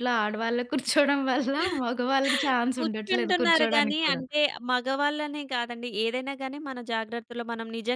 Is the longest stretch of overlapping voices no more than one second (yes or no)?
no